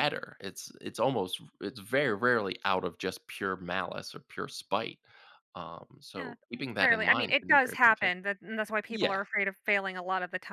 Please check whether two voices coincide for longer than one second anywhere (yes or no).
yes